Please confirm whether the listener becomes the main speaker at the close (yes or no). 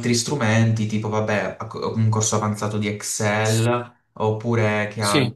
no